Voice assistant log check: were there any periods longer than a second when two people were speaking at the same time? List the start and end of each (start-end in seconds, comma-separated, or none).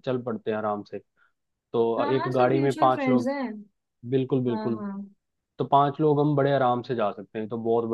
2.0-3.3